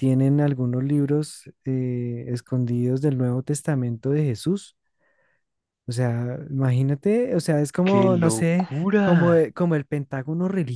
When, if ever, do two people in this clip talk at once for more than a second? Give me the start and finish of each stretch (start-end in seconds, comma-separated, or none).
7.8-9.4